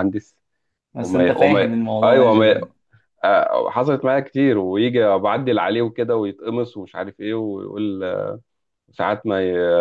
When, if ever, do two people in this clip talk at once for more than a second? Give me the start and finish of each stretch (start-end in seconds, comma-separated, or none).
1.0-2.5